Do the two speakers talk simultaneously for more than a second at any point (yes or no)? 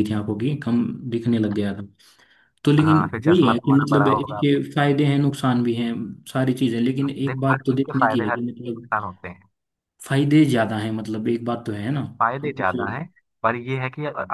yes